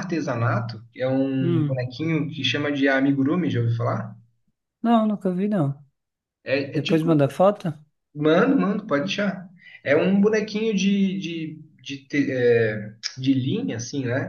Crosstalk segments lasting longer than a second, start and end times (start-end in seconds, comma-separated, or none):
none